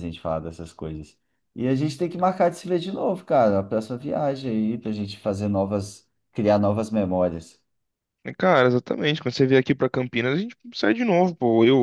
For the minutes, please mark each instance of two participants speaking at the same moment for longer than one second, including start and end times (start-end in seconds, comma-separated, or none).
none